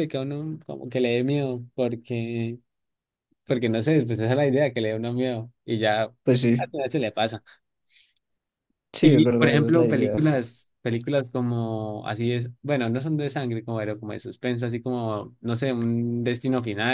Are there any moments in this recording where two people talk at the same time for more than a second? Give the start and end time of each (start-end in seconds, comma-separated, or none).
9.0-10.3